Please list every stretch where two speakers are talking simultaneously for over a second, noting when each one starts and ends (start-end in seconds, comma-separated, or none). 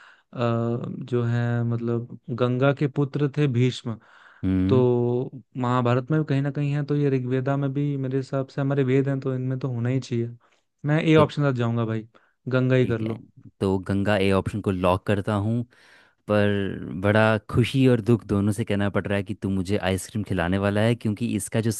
none